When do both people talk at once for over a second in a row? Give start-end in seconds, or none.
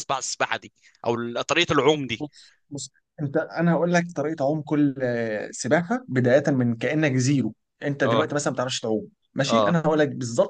none